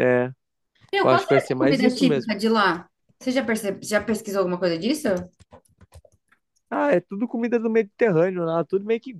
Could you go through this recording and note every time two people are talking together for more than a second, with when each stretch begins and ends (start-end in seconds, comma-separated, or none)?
1.0-2.3